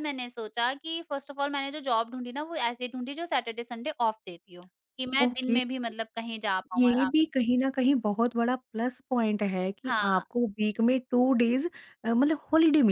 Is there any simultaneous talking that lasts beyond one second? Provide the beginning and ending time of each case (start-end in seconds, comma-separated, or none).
none